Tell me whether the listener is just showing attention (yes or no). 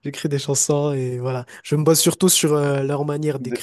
yes